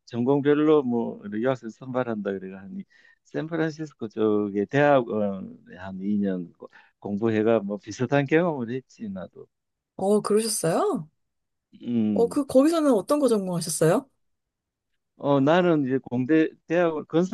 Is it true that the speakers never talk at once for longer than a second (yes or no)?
yes